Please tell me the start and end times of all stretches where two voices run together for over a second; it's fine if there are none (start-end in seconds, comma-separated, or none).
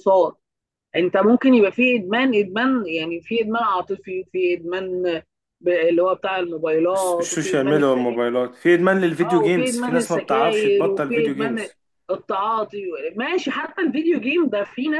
6.9-8.2, 9.2-11.7